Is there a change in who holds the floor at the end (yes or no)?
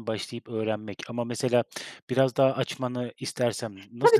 yes